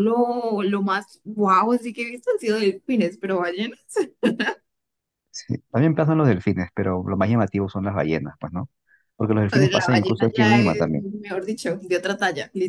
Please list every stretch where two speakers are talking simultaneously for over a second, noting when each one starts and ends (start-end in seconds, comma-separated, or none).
9.5-11.0